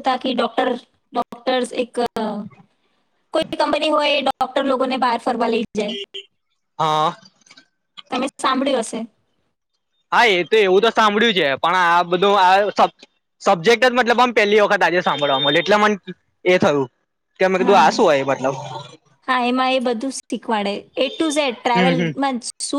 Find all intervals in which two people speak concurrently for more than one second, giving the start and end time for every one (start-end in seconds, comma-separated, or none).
none